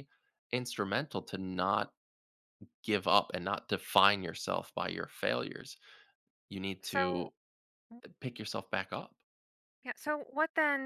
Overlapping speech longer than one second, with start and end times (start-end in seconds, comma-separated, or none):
none